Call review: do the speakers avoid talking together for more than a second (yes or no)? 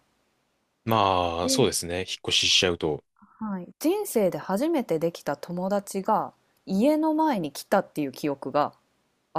yes